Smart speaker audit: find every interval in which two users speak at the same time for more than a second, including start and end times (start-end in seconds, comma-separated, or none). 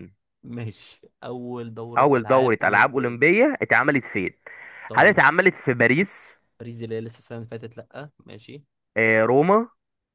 2.0-3.2